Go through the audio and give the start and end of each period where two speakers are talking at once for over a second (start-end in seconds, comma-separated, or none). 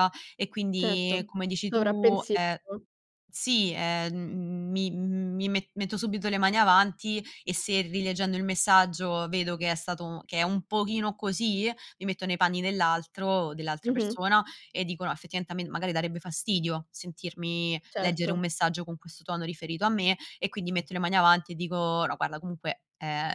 0.8-2.6